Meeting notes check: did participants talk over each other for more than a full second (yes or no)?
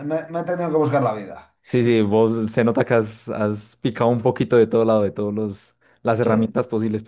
no